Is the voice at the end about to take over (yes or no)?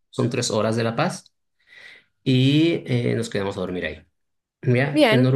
no